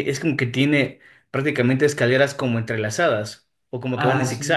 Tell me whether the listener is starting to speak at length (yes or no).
yes